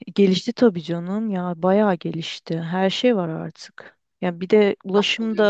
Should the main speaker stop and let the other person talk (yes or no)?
no